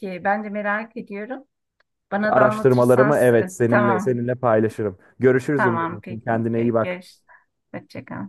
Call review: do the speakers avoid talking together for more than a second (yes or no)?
no